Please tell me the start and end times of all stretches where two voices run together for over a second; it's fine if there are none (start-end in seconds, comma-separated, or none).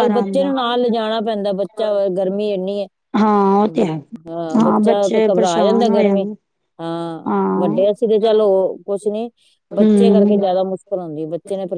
4.9-6.2